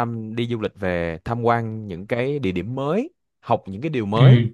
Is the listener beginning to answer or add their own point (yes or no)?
no